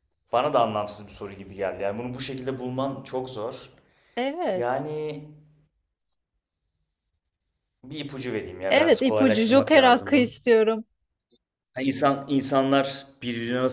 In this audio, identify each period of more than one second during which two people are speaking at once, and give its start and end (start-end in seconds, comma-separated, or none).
8.7-10.3